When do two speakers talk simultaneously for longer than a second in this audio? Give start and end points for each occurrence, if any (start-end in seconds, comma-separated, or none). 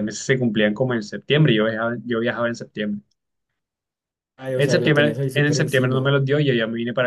4.5-6.1